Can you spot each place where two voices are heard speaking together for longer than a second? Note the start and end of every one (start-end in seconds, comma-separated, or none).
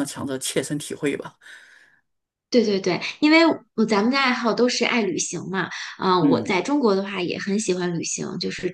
none